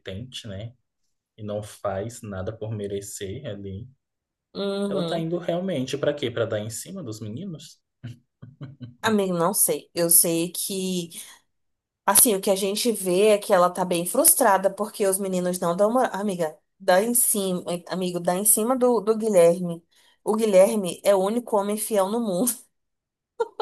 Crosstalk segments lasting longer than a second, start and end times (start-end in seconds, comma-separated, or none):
none